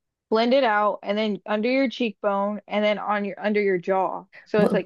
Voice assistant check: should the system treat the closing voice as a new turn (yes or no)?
yes